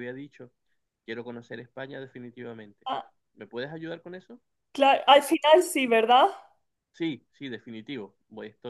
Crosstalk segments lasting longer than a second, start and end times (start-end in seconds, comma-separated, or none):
none